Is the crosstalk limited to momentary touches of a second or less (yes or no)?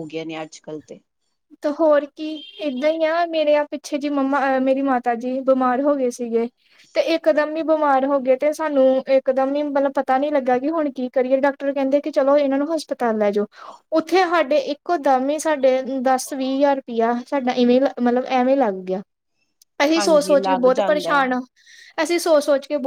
no